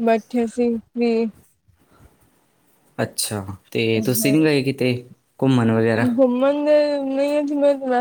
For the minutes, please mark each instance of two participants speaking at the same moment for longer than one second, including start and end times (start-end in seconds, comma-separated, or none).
none